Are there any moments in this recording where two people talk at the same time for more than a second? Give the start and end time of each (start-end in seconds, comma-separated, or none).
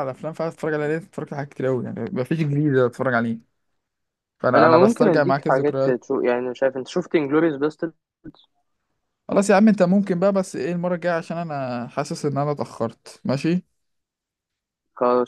4.5-6.0